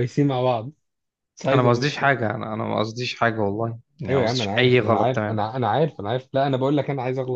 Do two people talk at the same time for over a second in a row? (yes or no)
yes